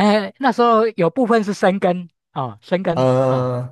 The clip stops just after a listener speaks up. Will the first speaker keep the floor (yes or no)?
yes